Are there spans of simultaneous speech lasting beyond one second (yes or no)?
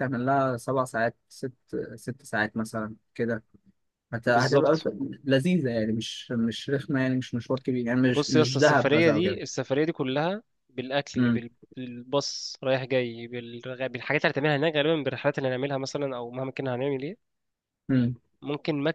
yes